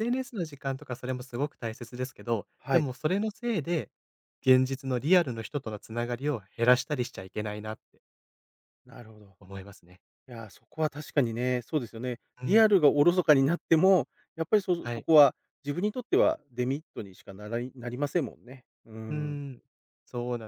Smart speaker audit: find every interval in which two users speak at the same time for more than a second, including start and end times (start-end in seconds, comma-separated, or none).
none